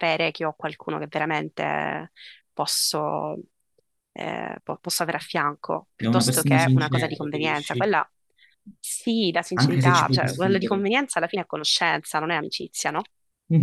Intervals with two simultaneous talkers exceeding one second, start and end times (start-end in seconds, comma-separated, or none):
6.0-7.9, 9.5-10.8